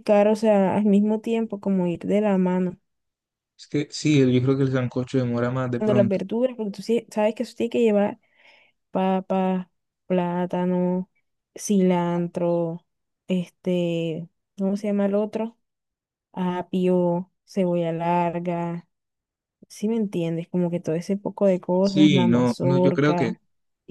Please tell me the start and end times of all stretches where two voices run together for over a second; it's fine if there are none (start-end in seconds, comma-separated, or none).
21.8-23.3